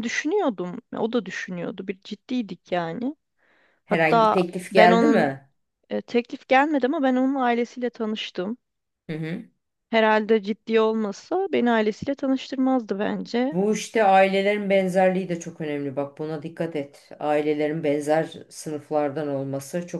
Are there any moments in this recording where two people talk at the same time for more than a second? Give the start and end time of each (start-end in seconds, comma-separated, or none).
3.9-5.3